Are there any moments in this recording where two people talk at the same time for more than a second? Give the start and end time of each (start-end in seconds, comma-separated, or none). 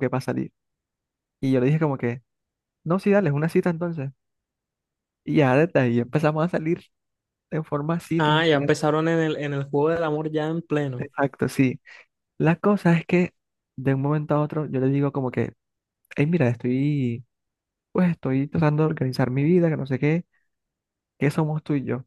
none